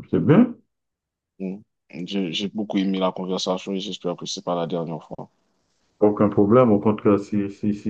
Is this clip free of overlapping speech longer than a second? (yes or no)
yes